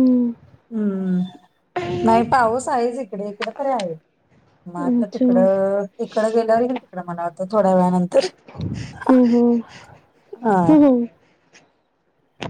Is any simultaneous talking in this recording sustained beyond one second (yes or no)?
no